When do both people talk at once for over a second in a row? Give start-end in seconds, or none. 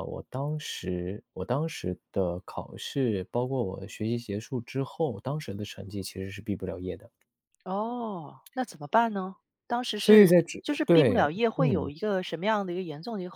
10.0-11.9